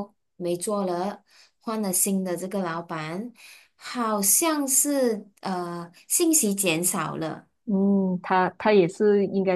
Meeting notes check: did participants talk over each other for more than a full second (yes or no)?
no